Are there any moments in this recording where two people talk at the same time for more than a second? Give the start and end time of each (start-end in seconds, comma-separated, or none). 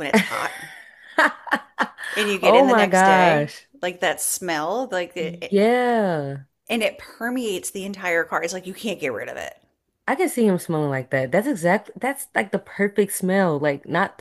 2.4-3.7